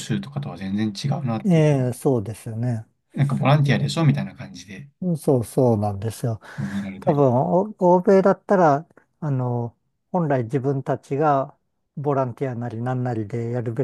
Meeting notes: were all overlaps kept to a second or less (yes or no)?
yes